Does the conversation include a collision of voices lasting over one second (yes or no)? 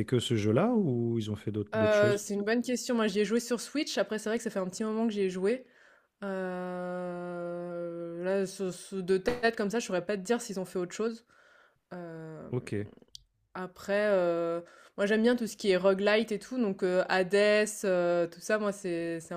no